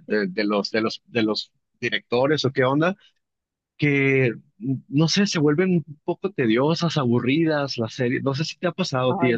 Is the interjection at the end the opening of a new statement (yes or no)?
yes